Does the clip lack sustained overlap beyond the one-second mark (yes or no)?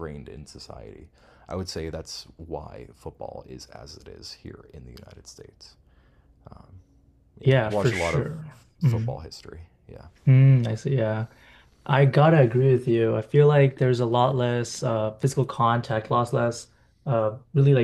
no